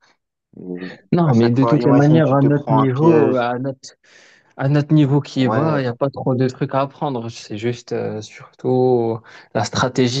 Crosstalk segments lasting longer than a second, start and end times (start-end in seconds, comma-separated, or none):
1.2-3.5